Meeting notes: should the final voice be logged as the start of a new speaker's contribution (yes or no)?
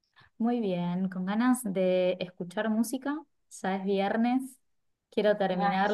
no